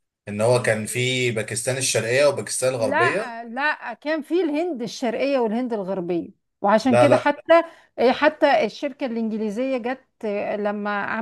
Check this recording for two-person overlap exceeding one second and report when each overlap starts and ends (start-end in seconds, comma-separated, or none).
none